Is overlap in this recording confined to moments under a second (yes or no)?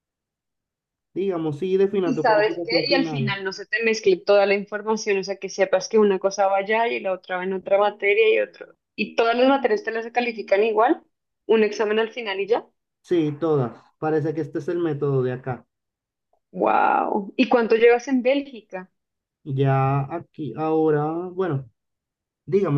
no